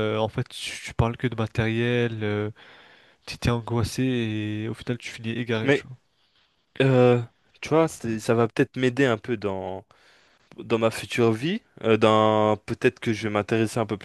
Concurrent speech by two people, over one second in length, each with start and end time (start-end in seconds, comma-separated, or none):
none